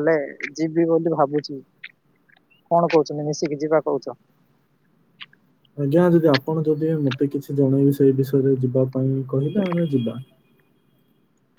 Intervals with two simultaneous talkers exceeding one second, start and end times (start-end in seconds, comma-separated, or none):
none